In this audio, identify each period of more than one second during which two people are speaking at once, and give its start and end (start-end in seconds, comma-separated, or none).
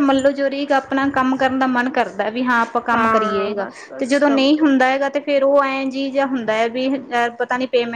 2.9-4.6